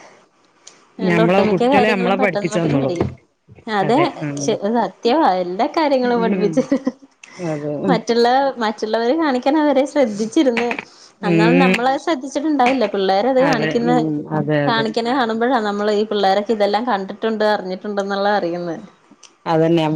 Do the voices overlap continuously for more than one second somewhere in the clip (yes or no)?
yes